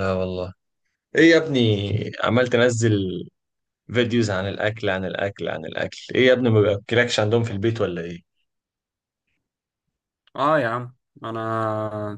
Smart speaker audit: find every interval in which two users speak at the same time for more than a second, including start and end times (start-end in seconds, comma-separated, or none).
none